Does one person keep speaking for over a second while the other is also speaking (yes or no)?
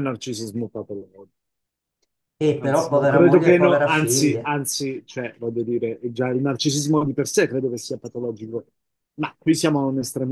yes